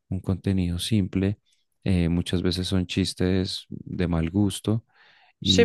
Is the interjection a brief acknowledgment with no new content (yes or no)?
no